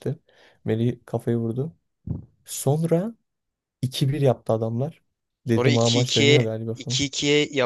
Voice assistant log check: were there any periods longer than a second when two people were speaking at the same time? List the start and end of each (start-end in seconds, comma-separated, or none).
5.5-7.0